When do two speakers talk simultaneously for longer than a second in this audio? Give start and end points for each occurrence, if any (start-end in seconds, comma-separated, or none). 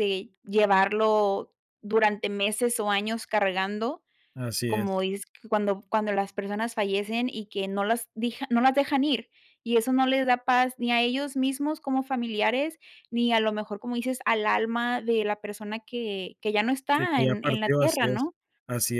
16.9-18.2